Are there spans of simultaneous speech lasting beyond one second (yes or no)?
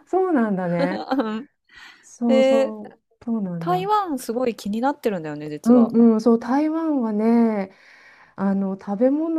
no